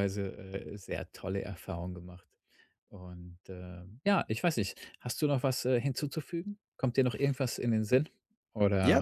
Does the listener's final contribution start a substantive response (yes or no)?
yes